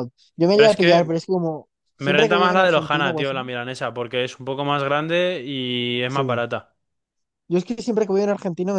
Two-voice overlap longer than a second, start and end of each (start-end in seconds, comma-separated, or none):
2.0-3.4